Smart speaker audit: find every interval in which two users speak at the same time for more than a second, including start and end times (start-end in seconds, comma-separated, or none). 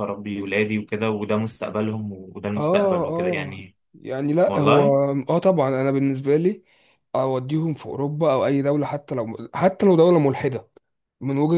2.6-3.8